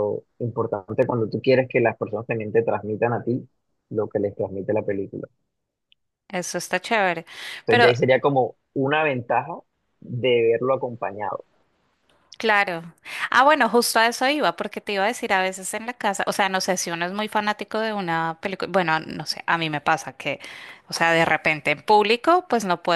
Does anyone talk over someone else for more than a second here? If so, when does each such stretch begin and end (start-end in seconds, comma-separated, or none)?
none